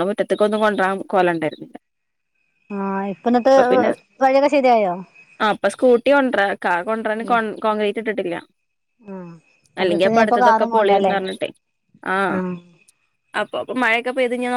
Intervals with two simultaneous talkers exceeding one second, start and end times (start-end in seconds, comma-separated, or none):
9.8-11.1